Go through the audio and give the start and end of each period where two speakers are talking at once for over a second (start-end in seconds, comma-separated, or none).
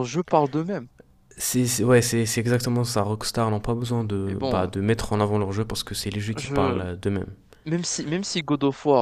none